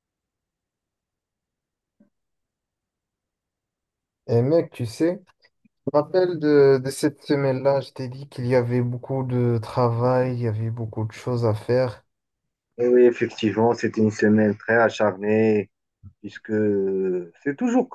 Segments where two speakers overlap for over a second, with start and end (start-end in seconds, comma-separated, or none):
none